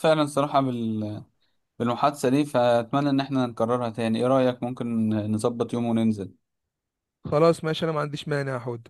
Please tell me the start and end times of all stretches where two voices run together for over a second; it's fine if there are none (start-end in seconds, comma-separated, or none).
none